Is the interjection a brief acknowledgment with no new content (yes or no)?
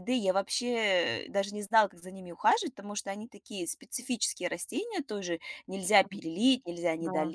yes